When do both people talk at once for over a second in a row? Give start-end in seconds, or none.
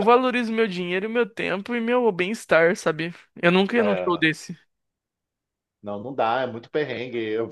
none